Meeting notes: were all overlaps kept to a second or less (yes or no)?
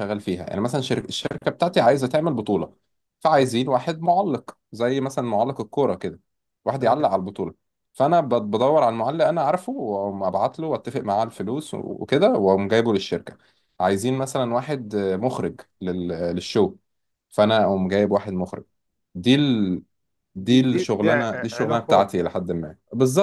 no